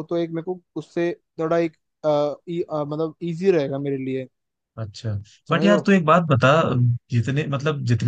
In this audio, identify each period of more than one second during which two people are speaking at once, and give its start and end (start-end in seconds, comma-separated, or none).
none